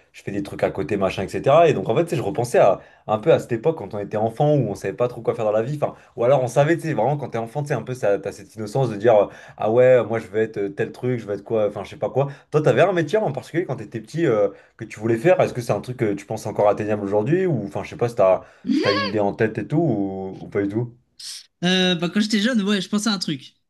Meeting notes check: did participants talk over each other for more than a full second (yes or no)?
no